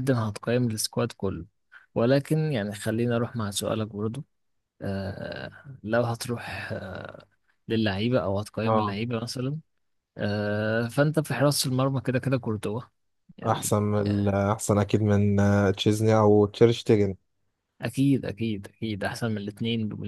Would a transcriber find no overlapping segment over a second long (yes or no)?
yes